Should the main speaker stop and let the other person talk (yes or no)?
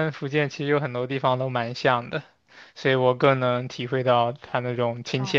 yes